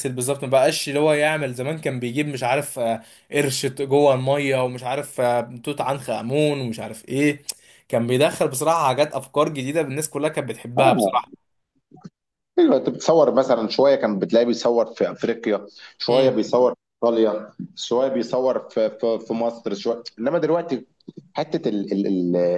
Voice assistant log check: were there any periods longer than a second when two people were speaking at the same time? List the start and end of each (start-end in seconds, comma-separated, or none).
none